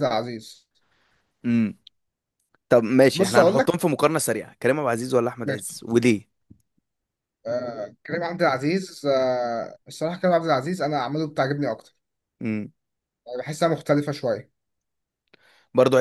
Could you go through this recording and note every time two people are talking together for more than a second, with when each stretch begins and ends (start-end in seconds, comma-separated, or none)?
none